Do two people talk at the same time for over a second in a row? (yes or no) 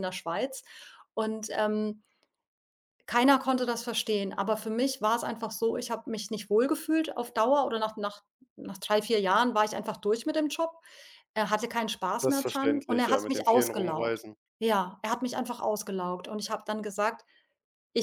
yes